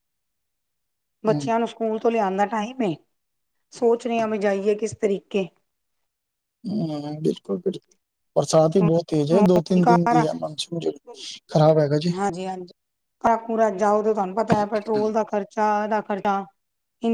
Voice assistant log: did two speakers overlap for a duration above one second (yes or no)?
no